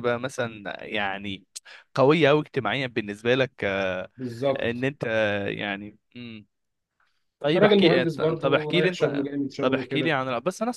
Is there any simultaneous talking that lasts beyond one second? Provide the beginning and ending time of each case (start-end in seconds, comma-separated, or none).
7.5-10.2